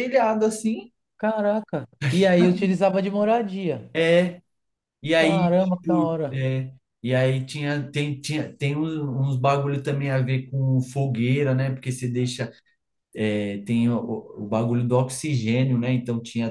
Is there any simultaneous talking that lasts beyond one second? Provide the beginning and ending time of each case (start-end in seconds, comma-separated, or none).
5.1-6.5